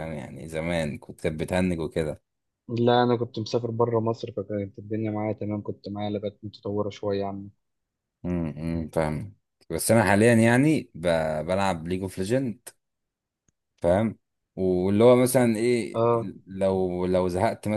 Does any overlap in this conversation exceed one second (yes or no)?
no